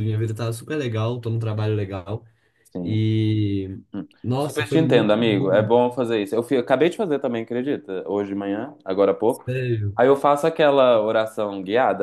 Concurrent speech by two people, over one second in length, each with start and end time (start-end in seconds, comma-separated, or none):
4.2-5.7